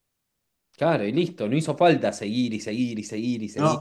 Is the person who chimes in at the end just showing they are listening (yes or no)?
no